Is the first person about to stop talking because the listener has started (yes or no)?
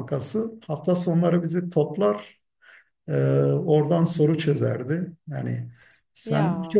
no